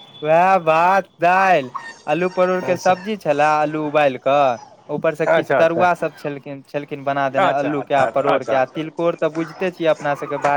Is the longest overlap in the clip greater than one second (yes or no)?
yes